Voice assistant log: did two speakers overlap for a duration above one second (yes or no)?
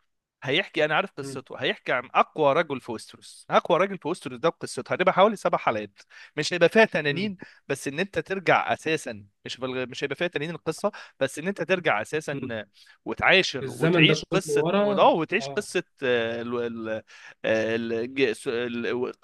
yes